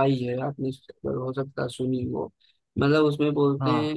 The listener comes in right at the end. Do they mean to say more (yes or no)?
no